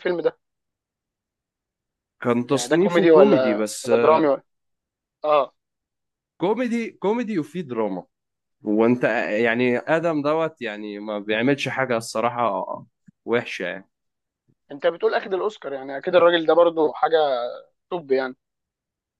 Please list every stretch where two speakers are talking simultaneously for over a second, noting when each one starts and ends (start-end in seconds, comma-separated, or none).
2.5-4.3